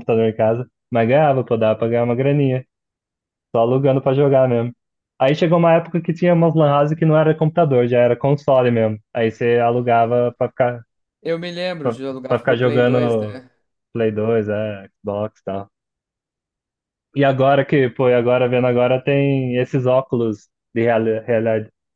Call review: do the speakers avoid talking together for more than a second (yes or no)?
no